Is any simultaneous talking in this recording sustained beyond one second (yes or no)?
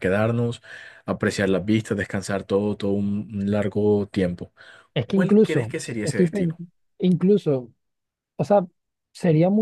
yes